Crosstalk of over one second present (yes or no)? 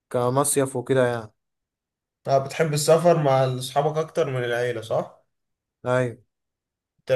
no